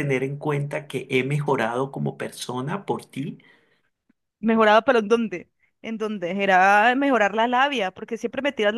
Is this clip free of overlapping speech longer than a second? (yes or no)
yes